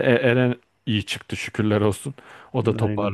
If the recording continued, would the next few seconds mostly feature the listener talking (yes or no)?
no